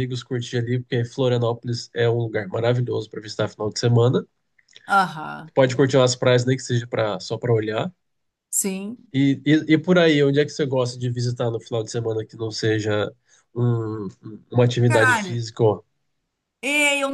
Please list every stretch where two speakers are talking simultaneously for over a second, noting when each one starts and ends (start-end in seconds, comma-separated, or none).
none